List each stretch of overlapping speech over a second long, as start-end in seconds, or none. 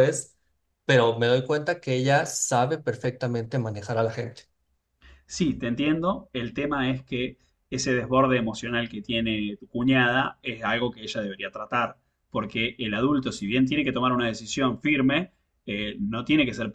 none